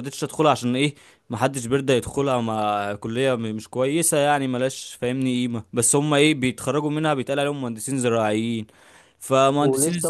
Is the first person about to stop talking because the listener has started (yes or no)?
yes